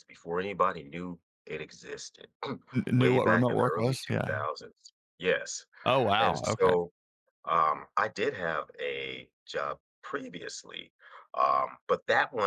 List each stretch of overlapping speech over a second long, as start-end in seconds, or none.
3.0-4.4